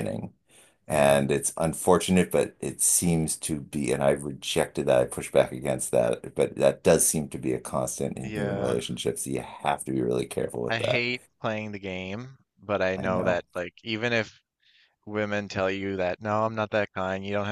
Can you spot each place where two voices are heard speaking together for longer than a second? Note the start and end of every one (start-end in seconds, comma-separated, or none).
none